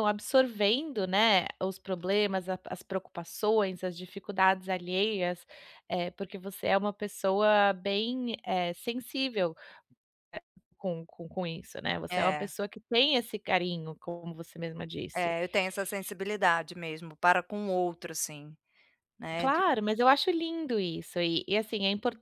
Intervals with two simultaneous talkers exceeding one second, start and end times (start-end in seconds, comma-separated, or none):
none